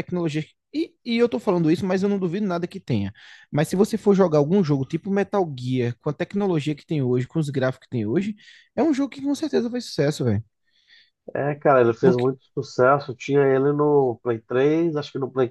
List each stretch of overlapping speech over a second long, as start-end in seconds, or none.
none